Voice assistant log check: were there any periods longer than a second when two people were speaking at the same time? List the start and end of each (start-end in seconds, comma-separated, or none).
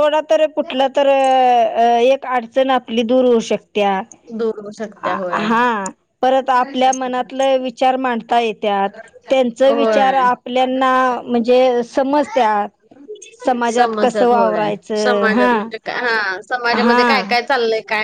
13.8-15.5